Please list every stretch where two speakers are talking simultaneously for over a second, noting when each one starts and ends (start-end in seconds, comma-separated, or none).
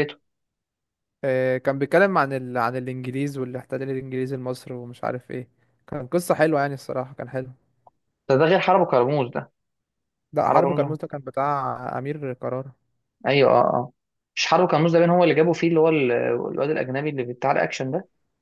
none